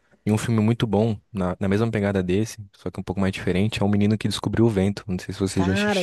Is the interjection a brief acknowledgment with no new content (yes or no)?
no